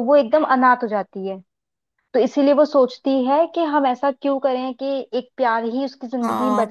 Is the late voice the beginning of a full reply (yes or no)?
yes